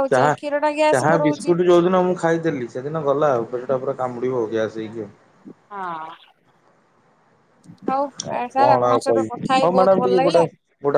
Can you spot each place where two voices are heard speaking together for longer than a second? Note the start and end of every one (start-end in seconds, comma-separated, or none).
8.6-10.4